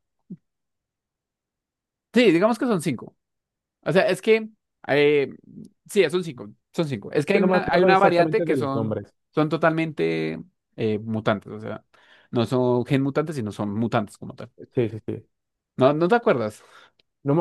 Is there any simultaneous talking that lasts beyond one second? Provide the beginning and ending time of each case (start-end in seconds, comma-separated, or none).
7.3-9.0